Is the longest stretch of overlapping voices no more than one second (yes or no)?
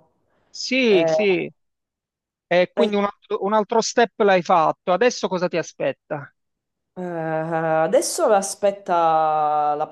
yes